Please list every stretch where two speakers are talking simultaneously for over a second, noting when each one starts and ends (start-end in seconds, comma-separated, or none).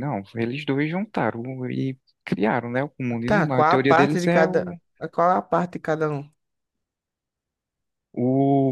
3.2-4.8